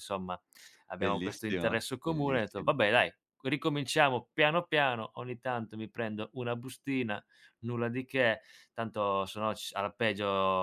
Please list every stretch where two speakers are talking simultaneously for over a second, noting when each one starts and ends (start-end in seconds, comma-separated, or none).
1.0-2.7